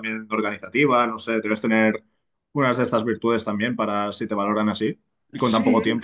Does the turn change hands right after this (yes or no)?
yes